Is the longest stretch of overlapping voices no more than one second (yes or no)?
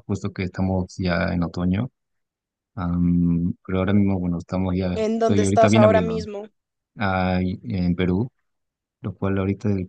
no